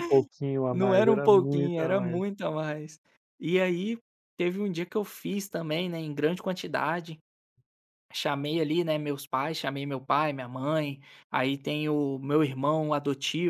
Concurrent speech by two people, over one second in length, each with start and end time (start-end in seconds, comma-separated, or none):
0.7-2.2